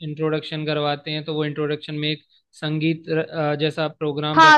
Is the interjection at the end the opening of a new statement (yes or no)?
yes